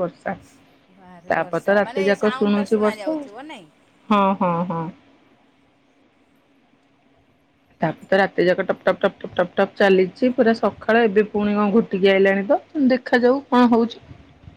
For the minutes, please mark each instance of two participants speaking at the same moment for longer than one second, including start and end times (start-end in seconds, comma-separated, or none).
1.3-3.2